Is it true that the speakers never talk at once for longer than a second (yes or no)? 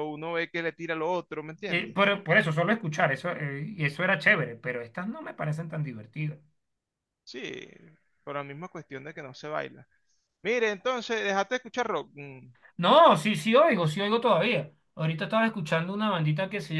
yes